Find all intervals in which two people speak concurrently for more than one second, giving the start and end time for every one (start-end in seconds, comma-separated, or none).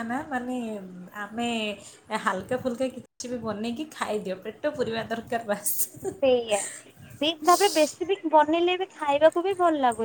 none